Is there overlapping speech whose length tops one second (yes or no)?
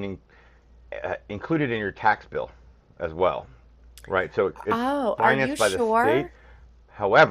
yes